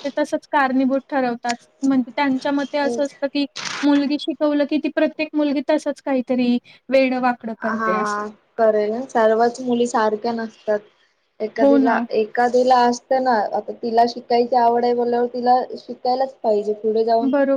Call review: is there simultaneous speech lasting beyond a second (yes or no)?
no